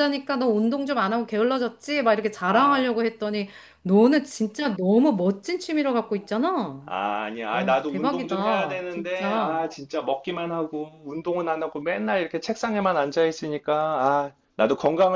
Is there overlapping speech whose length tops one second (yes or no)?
yes